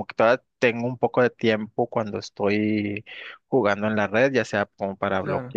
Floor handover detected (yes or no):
no